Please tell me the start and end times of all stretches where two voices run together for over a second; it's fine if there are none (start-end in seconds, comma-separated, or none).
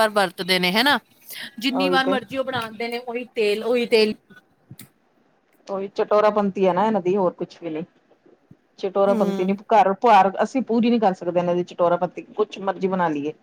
none